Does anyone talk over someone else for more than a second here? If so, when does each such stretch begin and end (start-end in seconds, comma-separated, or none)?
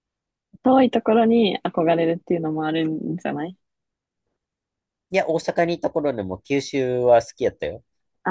none